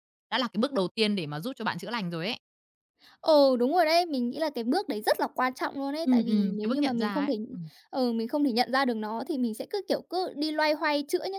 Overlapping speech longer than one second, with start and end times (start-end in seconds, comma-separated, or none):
6.0-7.3